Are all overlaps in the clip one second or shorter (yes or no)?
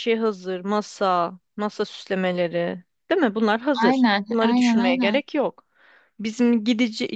no